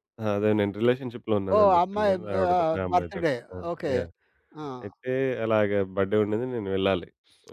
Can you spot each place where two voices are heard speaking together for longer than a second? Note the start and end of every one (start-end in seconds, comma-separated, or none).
1.6-3.3